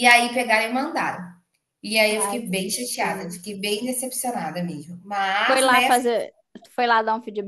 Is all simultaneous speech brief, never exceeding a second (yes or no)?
no